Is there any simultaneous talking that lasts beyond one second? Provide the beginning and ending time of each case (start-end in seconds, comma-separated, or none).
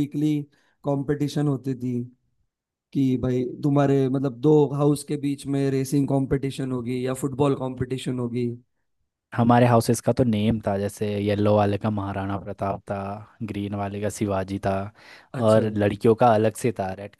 none